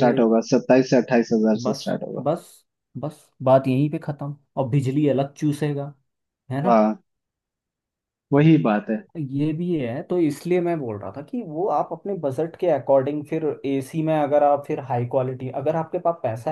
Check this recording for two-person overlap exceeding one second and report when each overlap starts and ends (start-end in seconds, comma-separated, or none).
none